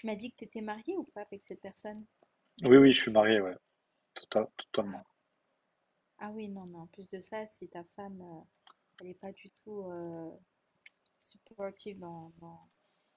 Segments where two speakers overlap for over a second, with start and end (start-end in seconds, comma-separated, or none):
none